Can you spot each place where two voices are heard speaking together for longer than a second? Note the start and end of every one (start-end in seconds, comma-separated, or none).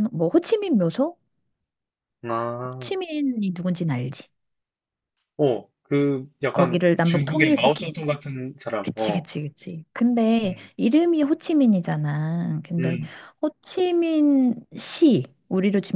6.5-7.9